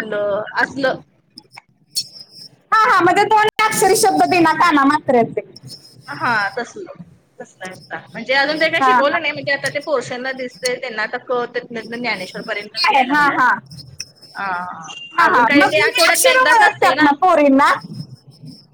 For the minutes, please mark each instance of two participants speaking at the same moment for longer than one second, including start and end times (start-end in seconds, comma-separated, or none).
15.3-16.9